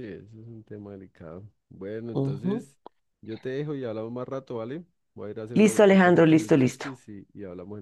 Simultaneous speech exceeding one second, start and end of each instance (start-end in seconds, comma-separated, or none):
5.5-6.9